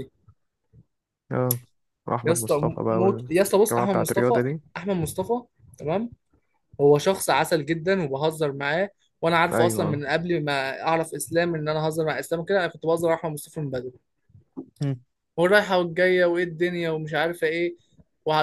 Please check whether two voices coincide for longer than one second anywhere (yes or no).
yes